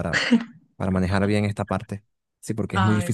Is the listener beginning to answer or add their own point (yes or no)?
no